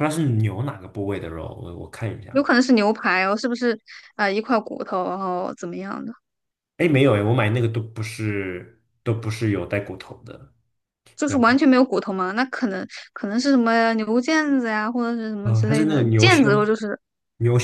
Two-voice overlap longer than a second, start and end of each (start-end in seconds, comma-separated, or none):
15.4-16.7